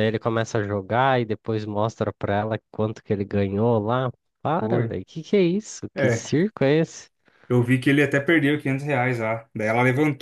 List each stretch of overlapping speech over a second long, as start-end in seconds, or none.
none